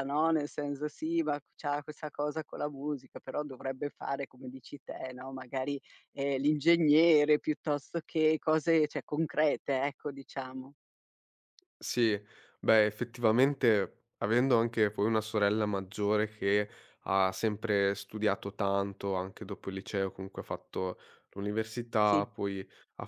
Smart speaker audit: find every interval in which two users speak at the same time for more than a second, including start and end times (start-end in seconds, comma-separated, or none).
none